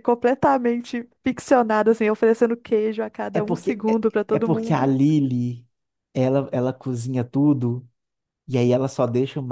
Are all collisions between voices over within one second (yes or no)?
no